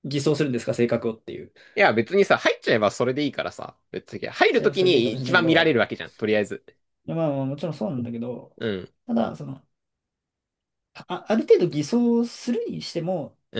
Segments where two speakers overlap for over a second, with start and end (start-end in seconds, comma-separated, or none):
4.5-5.8